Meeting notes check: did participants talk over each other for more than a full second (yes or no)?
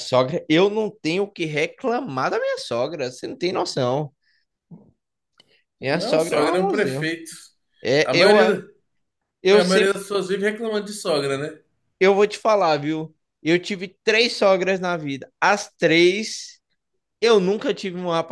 yes